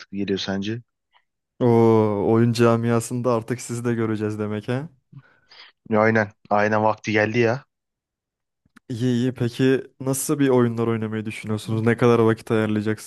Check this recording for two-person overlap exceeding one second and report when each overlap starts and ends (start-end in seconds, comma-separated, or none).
none